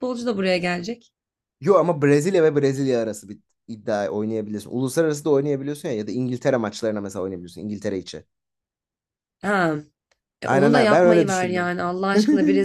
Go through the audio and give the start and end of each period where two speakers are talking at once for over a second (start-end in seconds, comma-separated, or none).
10.4-11.7